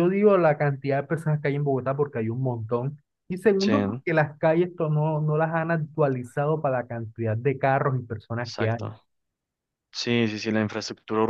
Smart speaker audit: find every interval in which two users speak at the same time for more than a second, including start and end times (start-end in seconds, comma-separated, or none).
none